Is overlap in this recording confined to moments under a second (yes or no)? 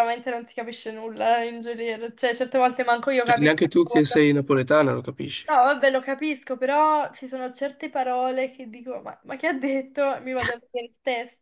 yes